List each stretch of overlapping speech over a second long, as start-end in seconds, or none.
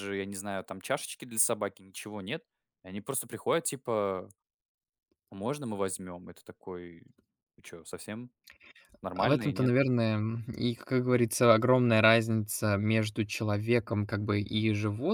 none